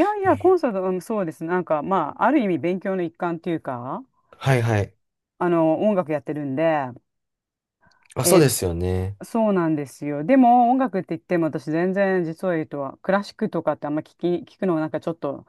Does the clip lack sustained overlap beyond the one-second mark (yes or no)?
yes